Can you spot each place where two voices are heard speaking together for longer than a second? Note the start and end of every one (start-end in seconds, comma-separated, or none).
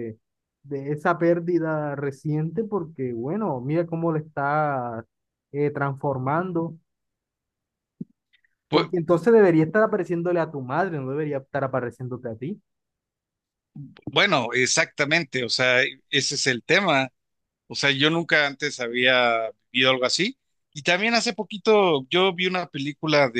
none